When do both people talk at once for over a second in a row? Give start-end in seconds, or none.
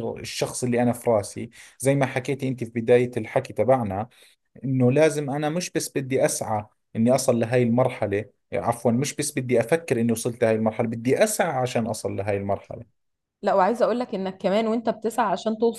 none